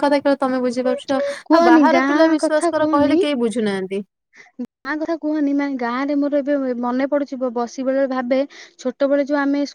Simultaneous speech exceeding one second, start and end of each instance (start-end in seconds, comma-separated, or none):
1.5-3.2